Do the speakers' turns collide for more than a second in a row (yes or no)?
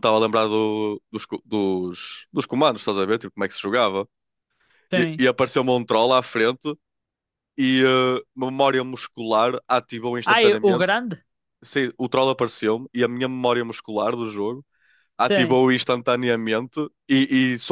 no